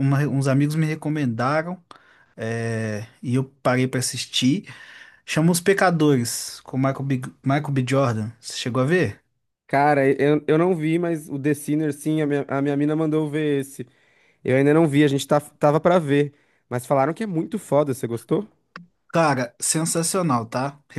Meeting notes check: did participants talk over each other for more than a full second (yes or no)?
no